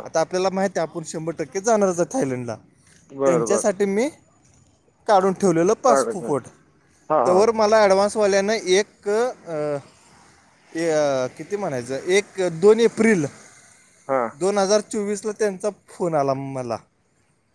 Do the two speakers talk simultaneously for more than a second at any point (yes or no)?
no